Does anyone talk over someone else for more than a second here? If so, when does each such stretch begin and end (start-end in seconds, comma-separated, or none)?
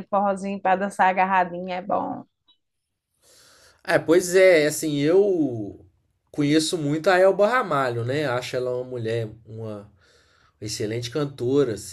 none